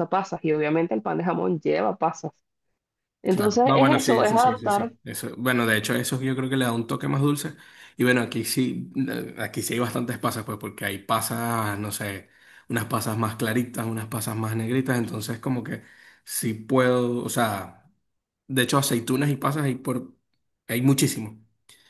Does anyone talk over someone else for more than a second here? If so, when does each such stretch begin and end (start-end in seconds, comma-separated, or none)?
3.3-4.9